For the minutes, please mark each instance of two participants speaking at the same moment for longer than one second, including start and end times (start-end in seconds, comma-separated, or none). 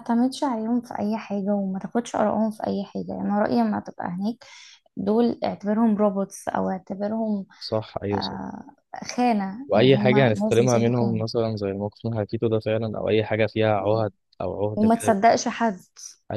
9.7-11.2